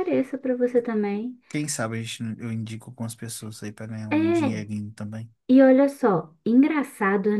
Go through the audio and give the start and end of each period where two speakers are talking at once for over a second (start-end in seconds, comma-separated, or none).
none